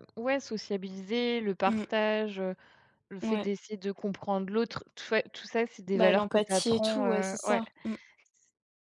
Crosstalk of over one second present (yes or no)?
yes